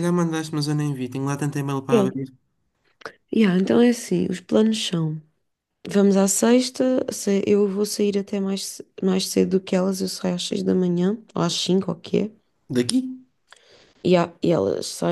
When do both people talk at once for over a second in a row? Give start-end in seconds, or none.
none